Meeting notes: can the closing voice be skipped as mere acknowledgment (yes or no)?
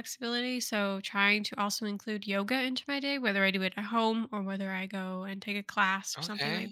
no